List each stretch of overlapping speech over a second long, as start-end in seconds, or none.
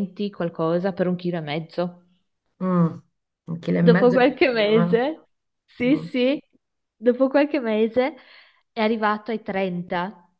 3.8-5.0